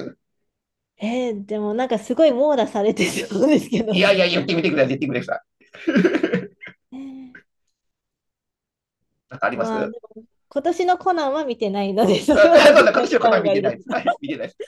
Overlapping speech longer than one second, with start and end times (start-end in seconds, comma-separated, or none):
12.3-14.0